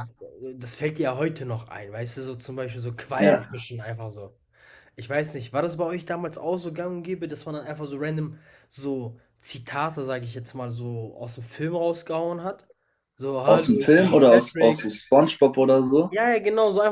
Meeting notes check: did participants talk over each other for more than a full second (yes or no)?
yes